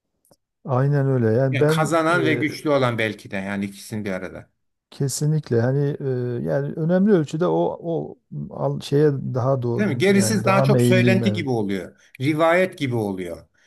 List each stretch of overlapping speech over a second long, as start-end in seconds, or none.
9.8-11.5